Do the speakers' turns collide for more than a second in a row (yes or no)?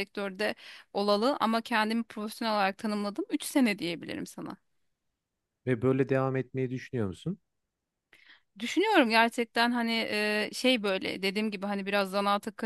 no